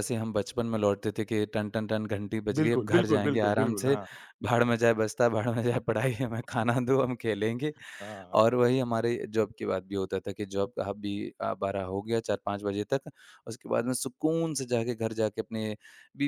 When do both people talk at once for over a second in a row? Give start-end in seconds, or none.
2.6-4.0